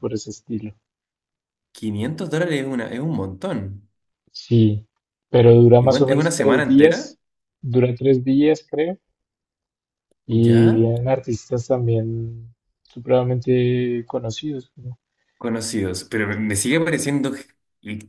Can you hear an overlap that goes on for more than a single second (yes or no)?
yes